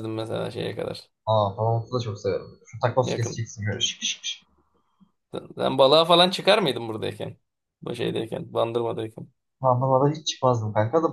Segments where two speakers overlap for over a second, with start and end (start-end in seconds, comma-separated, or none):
none